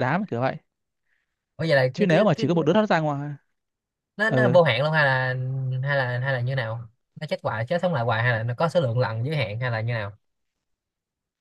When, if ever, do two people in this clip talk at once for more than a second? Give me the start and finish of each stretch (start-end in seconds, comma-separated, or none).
none